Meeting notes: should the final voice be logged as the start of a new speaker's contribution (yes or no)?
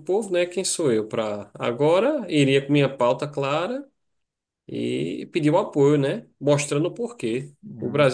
no